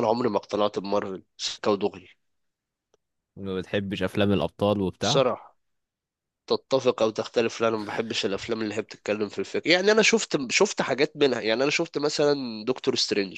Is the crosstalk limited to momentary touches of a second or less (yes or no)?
yes